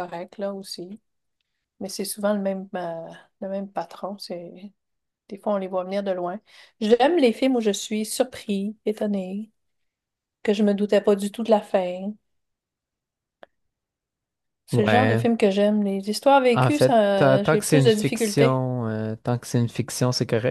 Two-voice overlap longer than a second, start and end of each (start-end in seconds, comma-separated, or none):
16.5-18.6